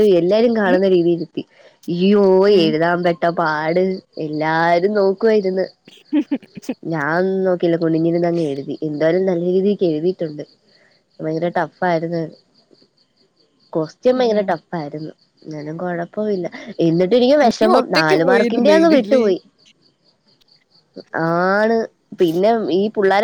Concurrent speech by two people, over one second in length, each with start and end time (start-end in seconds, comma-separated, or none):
17.6-19.2